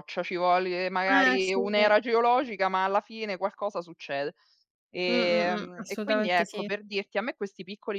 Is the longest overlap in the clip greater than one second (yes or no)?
yes